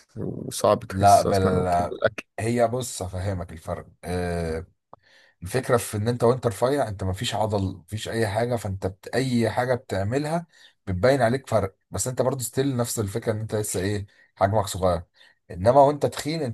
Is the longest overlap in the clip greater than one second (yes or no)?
no